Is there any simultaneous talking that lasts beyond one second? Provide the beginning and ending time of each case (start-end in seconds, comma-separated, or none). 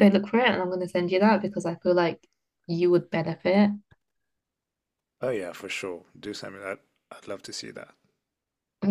none